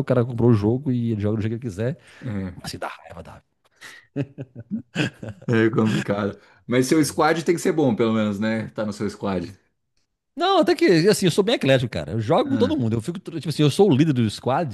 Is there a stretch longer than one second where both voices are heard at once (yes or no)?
no